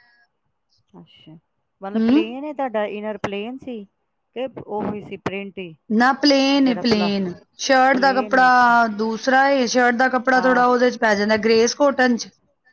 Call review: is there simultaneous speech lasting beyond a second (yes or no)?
no